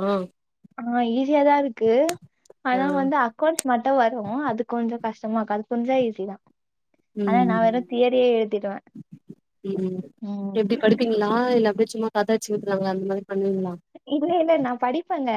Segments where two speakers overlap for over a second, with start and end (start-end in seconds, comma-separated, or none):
none